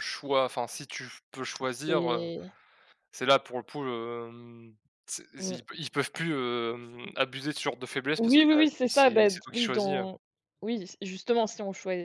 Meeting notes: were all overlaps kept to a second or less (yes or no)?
no